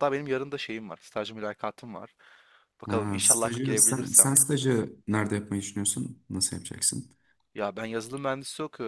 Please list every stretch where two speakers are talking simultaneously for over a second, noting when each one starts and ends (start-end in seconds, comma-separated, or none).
2.9-4.4